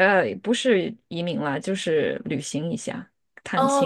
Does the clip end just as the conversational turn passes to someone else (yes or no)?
yes